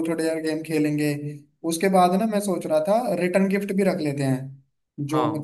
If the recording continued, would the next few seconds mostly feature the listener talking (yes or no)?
no